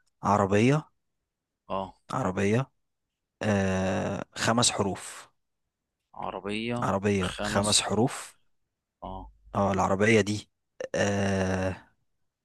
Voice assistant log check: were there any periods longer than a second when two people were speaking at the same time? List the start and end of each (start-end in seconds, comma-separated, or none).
6.8-8.3